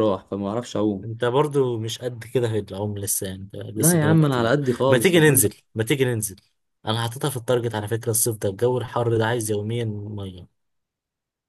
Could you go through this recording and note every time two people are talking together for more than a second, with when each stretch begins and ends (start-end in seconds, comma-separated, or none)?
3.7-5.1